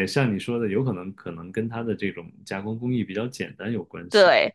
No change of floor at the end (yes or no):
no